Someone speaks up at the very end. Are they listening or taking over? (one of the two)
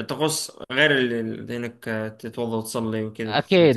taking over